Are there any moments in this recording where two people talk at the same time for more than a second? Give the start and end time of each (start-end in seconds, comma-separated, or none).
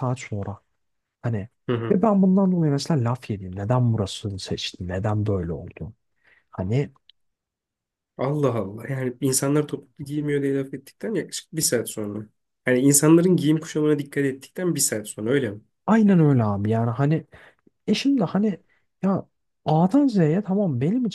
none